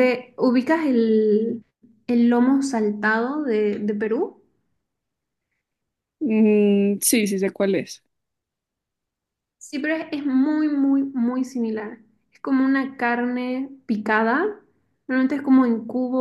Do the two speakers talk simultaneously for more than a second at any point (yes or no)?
no